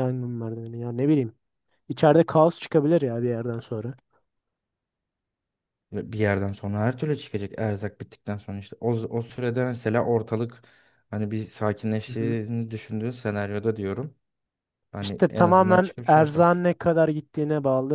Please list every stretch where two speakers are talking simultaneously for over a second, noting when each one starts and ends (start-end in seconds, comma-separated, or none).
15.0-16.6